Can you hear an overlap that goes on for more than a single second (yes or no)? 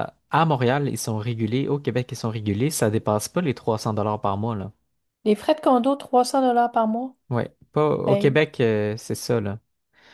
no